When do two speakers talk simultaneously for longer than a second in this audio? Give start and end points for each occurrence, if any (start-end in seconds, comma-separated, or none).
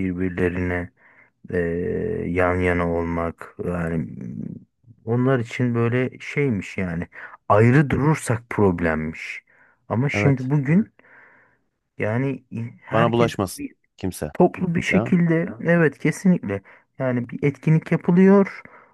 none